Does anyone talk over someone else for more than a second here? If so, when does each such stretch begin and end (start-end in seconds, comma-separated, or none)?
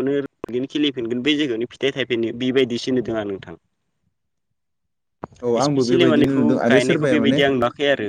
5.6-7.4